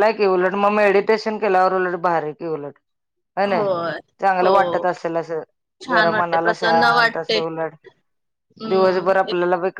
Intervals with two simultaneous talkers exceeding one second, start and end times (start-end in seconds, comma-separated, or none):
5.9-7.4